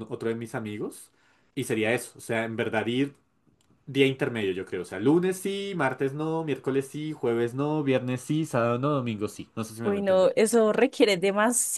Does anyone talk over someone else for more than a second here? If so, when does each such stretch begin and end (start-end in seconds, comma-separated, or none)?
none